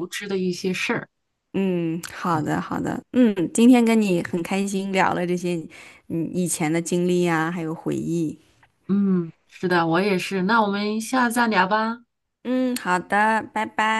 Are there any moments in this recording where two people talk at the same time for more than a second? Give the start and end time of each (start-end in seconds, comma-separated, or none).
none